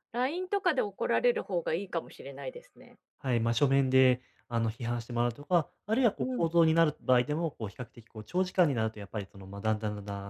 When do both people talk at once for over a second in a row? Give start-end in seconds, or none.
none